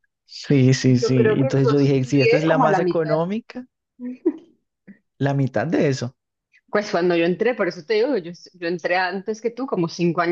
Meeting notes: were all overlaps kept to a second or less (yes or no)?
no